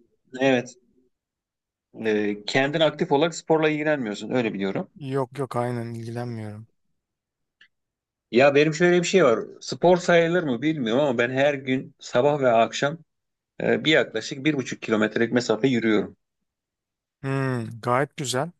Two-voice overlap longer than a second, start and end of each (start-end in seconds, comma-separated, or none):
none